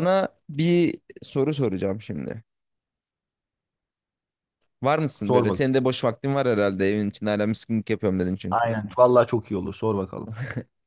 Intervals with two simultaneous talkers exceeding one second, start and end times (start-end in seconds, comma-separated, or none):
none